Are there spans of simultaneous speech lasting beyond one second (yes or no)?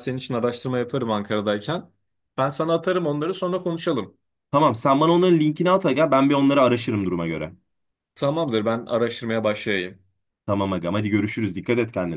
no